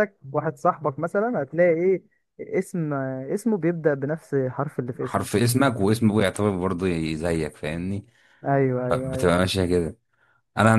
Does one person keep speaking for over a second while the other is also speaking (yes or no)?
no